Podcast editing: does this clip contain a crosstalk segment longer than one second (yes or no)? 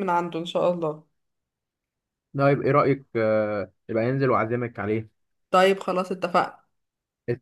no